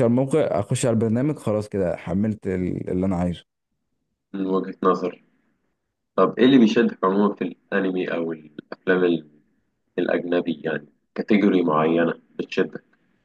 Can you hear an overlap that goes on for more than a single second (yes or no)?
no